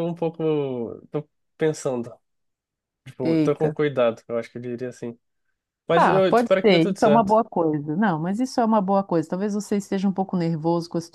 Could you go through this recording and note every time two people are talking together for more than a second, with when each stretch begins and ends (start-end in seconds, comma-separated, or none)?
5.9-7.4